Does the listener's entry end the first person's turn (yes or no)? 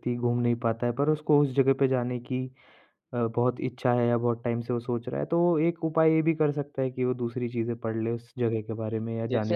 yes